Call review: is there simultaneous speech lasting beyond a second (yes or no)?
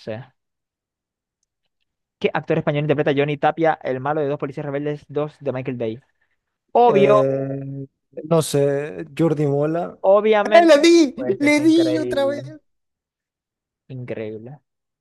yes